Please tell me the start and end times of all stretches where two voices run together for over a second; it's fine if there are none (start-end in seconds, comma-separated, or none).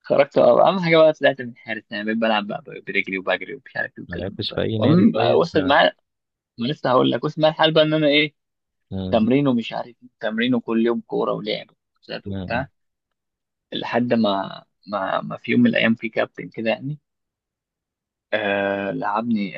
4.1-5.8